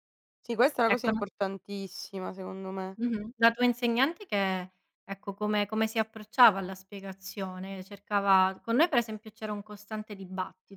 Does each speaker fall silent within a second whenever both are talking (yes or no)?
yes